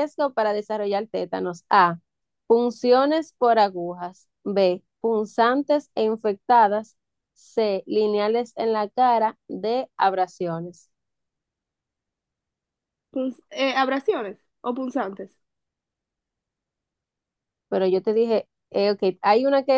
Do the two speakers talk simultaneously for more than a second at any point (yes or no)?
no